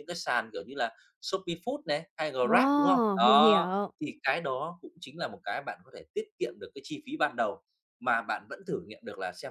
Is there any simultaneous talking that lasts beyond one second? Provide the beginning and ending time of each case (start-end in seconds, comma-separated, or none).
2.4-3.9